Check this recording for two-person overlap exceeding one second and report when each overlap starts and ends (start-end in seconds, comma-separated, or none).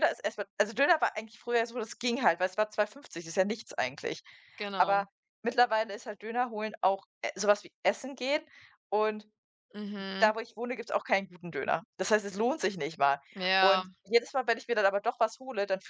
none